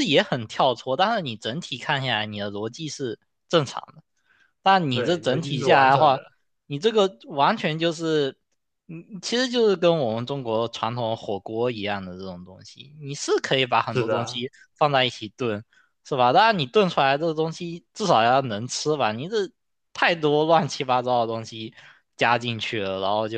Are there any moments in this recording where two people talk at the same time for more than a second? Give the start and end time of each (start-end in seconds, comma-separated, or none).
4.9-6.2